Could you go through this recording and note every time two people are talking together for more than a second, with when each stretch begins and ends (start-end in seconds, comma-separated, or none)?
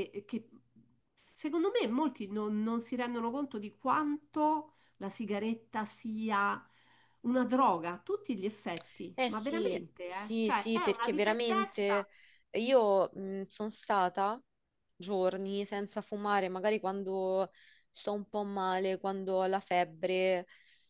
9.1-12.1